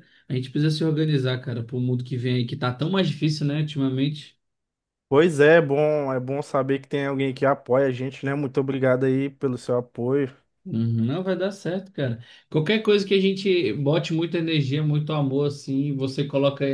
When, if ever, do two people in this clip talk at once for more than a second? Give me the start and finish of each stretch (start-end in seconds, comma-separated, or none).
none